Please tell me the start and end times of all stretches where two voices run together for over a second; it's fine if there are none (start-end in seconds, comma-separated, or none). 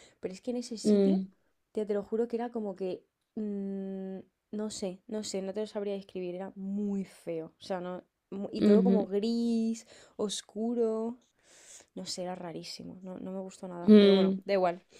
none